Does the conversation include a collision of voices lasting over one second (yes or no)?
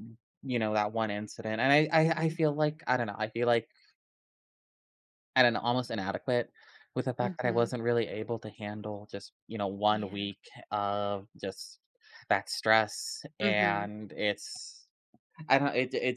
no